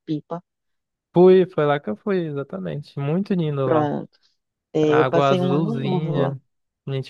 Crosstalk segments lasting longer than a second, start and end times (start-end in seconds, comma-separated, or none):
4.8-6.4